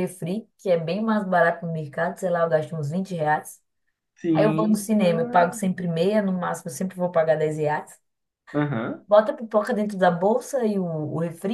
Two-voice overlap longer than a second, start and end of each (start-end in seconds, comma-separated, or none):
4.3-5.6